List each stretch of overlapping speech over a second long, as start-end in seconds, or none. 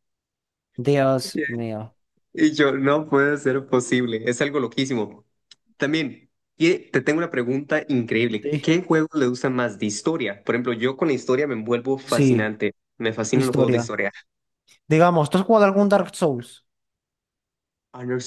none